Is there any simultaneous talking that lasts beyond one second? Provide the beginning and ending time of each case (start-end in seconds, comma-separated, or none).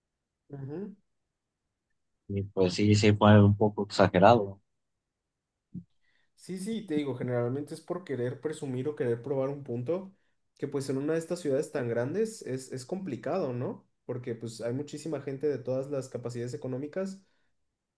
none